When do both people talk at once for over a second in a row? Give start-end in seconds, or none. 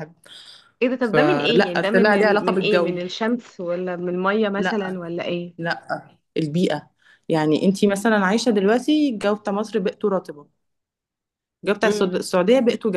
1.0-3.0